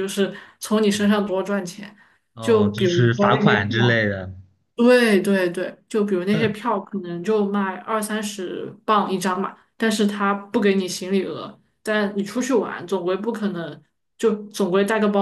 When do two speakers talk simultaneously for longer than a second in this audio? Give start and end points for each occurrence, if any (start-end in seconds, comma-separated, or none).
2.4-4.0